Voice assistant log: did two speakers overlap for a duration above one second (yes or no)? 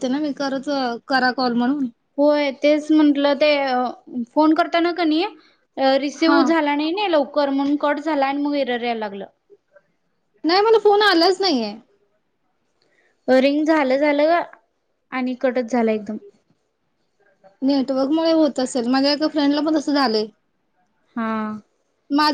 no